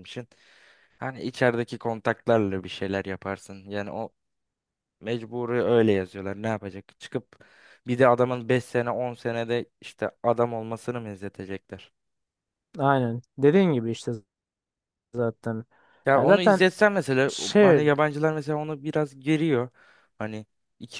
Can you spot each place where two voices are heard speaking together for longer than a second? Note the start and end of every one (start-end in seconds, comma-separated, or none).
none